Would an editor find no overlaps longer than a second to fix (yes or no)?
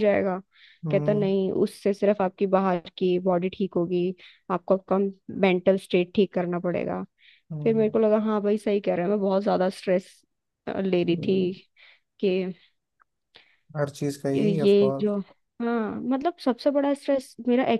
yes